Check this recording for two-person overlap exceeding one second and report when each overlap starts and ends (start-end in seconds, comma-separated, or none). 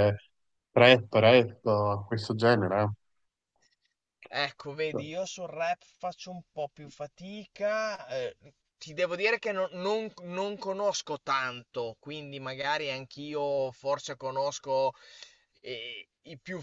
none